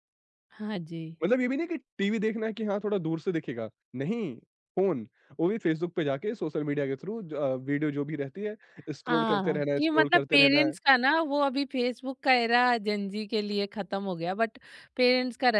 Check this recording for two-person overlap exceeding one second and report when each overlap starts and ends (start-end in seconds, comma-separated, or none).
9.1-10.7